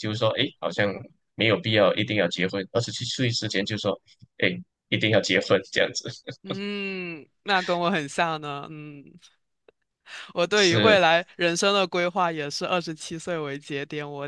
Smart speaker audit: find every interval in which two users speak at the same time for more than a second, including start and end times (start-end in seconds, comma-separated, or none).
none